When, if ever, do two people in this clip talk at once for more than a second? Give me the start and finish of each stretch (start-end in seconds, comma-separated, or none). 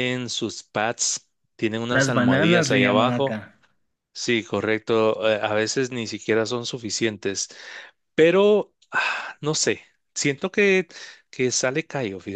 1.9-3.4